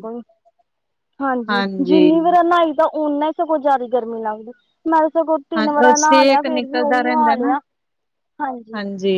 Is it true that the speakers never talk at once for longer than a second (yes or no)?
no